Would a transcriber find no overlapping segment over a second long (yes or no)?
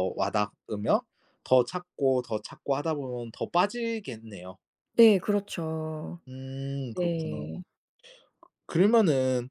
yes